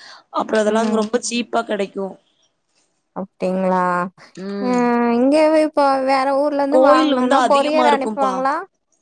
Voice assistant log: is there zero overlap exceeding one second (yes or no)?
no